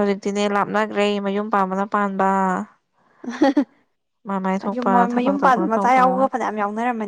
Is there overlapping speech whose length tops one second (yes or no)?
yes